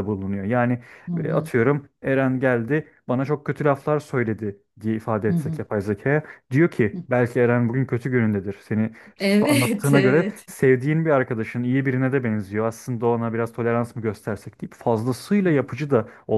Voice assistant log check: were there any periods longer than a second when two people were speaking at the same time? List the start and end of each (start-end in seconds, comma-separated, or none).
9.2-10.5